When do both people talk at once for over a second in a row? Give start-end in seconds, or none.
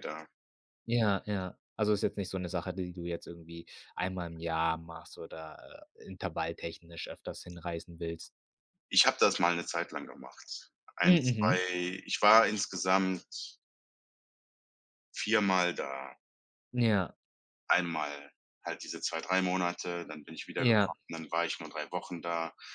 none